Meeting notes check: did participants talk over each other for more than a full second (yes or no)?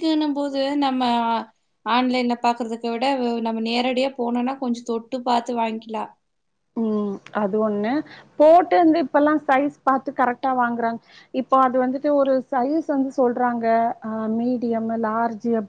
no